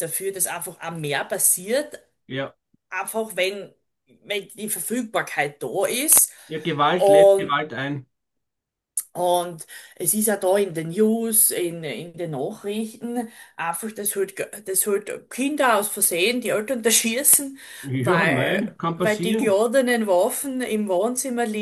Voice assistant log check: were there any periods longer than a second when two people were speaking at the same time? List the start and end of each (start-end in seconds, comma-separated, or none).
17.9-19.6